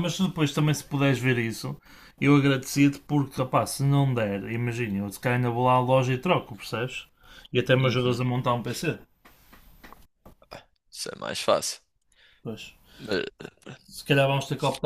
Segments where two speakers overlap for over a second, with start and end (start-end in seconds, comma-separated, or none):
none